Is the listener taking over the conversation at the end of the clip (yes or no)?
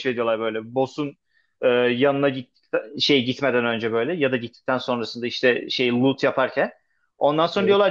no